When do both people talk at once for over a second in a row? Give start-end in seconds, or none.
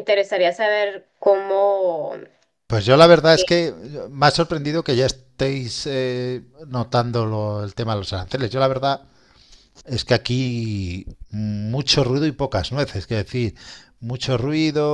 none